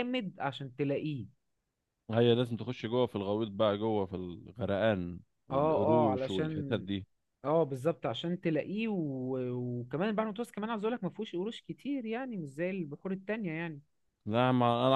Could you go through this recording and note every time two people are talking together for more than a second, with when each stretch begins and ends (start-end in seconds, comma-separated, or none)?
5.5-6.8